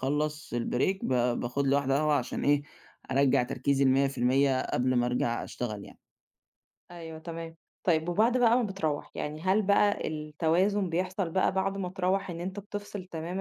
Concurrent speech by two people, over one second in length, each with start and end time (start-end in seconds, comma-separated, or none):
none